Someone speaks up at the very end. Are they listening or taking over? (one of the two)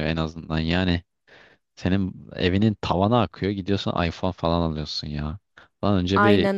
listening